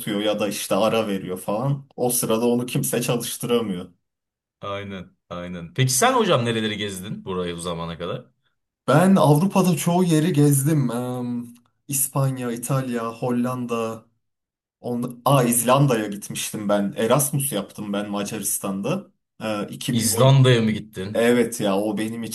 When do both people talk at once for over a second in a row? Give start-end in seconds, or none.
none